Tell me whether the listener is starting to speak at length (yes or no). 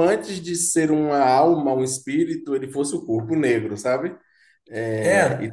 yes